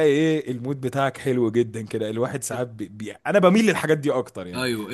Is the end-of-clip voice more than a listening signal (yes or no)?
yes